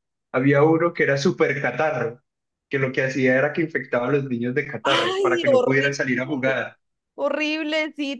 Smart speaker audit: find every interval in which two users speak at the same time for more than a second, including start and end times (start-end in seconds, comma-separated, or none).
4.8-6.6